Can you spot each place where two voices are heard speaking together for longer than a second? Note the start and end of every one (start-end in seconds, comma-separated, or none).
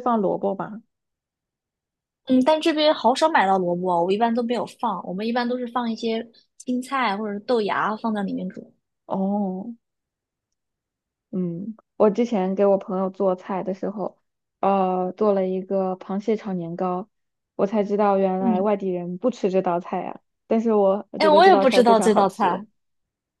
21.2-22.6